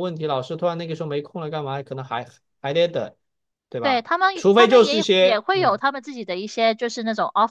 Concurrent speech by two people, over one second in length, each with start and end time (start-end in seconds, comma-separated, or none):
3.8-5.8